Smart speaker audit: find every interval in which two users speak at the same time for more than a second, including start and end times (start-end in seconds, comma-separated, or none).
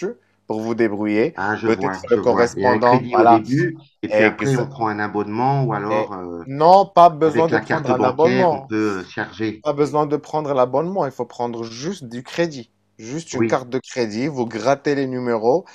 1.4-3.4, 7.2-8.7